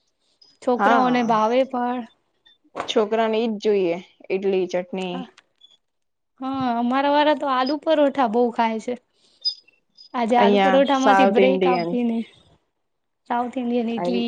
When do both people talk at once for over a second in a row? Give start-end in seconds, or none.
10.4-11.9